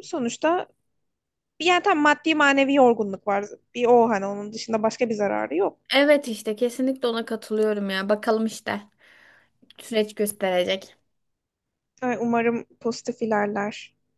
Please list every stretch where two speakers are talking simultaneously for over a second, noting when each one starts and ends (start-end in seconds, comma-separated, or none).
none